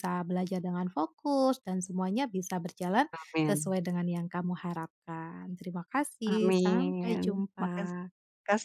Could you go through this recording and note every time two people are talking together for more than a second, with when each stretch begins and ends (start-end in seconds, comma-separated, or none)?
6.3-7.9